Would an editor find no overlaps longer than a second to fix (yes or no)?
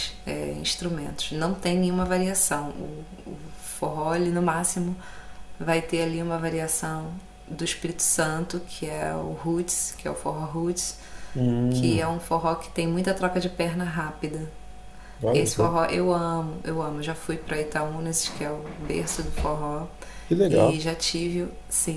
yes